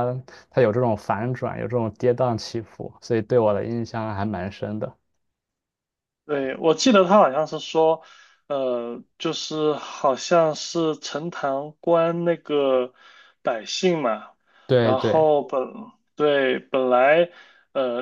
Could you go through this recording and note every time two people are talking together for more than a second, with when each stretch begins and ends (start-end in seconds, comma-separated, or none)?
none